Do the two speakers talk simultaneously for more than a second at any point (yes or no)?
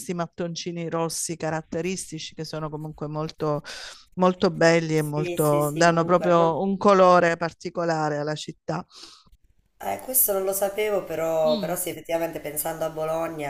yes